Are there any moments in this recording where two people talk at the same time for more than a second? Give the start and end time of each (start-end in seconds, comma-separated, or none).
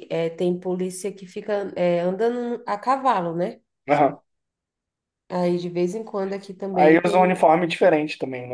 none